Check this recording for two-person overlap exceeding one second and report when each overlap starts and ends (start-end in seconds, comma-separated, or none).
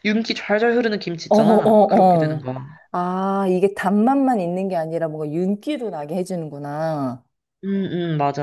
1.3-2.5